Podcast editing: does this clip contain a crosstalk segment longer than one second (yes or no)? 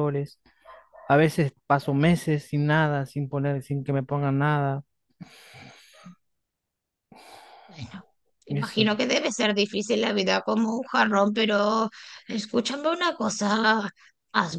no